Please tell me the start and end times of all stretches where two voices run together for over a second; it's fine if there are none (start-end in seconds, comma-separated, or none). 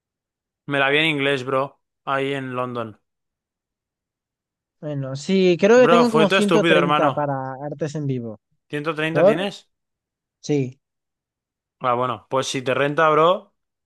5.7-7.3